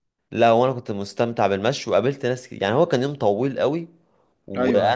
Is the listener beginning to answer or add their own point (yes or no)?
no